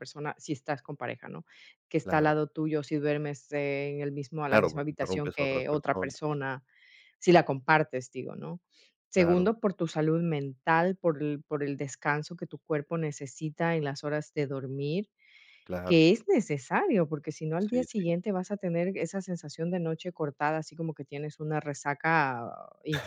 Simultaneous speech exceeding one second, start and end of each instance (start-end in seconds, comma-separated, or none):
4.5-6.2